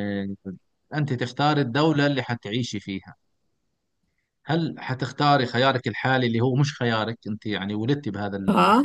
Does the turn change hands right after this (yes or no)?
no